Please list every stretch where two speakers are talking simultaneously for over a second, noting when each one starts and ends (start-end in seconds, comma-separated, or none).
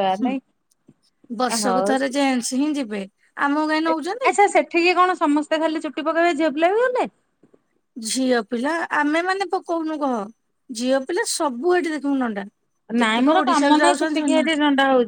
13.0-14.4